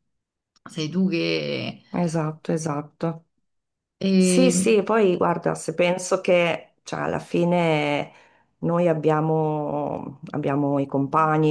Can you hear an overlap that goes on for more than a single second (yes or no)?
no